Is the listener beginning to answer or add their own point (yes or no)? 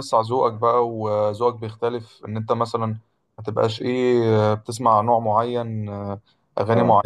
no